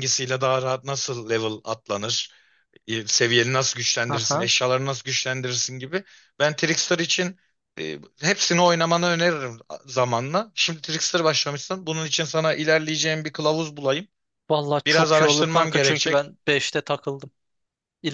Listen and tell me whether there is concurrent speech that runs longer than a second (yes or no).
yes